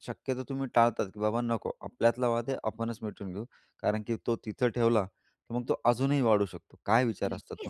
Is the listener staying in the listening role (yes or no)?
no